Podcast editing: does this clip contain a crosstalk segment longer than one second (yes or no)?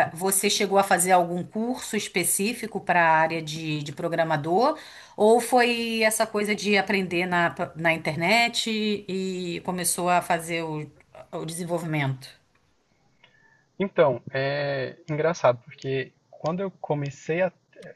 no